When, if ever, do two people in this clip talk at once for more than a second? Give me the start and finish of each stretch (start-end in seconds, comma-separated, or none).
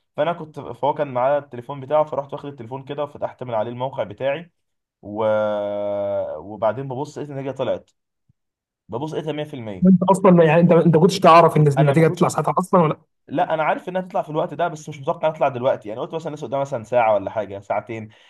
none